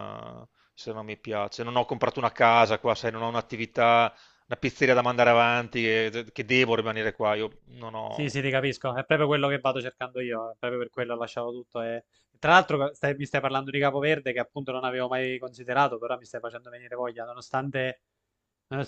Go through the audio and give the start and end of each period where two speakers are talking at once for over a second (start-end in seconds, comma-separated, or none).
none